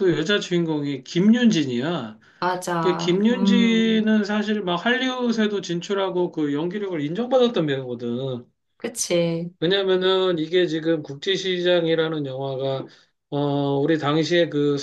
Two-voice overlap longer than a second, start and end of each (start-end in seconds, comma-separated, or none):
2.8-4.1